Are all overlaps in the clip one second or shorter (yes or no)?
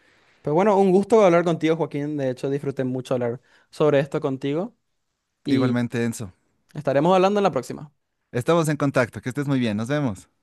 yes